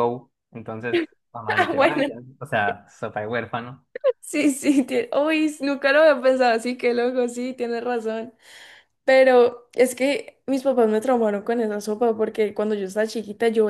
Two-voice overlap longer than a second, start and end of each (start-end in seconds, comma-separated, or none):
none